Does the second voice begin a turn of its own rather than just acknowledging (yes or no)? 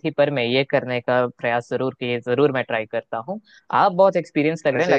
no